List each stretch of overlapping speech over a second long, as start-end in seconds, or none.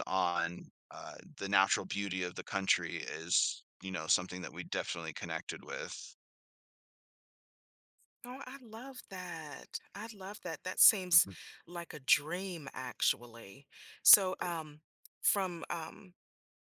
none